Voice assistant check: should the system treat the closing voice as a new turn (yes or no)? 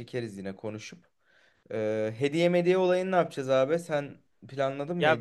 yes